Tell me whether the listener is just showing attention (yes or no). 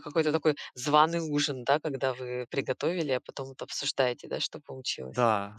no